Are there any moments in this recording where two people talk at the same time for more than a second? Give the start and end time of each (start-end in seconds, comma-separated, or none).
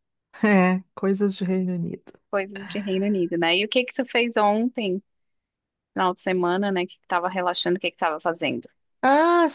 none